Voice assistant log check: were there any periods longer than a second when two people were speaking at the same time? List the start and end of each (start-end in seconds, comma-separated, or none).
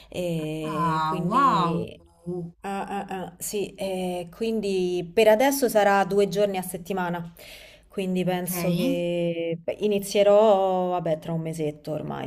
0.6-1.9